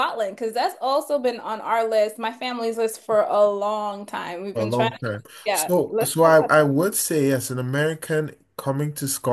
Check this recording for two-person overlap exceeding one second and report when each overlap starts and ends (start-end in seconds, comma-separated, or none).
4.5-6.5